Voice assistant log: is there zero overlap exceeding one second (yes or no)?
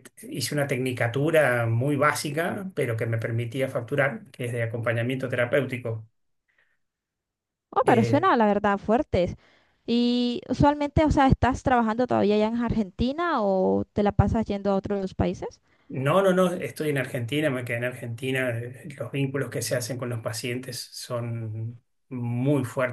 yes